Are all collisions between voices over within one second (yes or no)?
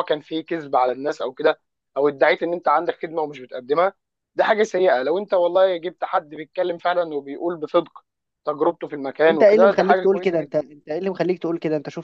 no